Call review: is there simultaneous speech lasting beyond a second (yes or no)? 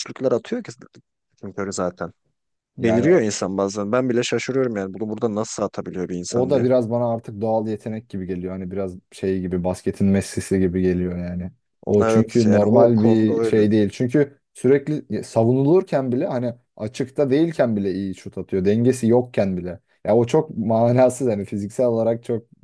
yes